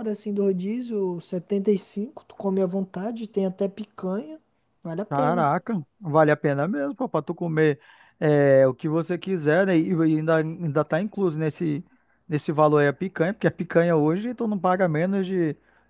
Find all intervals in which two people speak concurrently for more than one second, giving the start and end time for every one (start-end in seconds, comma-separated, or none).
none